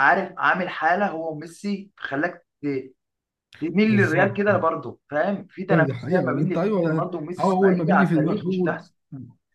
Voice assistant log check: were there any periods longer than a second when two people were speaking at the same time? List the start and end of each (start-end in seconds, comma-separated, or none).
5.7-8.8